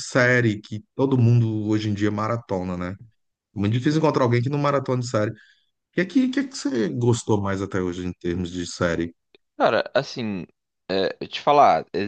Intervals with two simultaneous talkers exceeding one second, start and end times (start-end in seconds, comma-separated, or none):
none